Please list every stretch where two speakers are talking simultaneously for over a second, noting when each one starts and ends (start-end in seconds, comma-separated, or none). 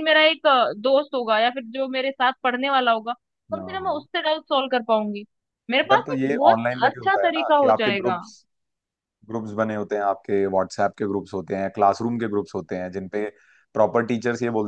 5.9-8.2